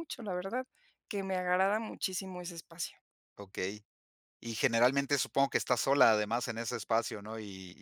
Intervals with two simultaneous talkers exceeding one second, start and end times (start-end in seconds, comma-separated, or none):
none